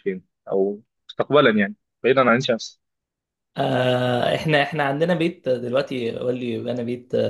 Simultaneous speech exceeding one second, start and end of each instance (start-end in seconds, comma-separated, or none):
none